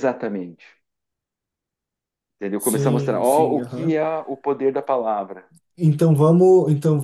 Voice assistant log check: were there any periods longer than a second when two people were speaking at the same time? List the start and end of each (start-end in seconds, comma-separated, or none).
2.6-4.0